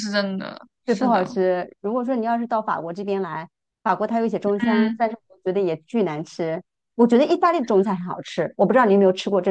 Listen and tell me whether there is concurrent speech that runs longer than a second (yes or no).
no